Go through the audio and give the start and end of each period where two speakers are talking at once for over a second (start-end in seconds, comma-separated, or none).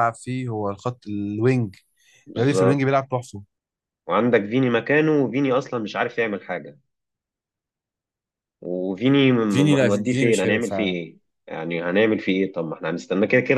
9.5-11.0